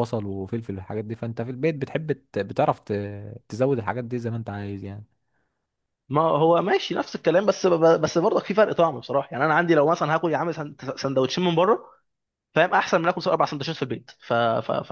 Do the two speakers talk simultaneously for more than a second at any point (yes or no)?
no